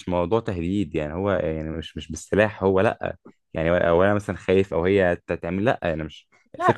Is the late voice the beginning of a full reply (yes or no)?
no